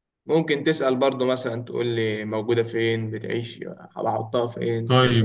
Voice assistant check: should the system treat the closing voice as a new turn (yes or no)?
yes